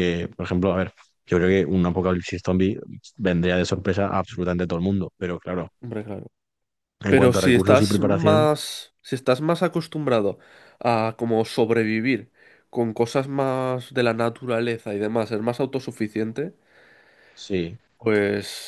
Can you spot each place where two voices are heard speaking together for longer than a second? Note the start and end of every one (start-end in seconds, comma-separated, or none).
7.1-8.5